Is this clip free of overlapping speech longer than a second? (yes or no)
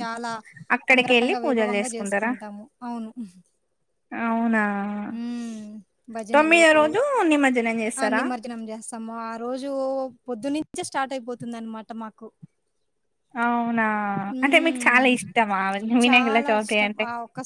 no